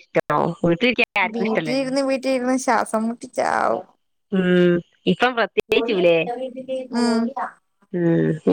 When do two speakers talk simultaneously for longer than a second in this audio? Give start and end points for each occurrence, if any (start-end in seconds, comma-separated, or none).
none